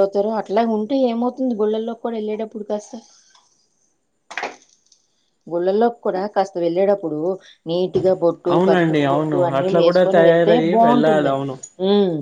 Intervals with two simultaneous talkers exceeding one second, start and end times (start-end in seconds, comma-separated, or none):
8.5-11.4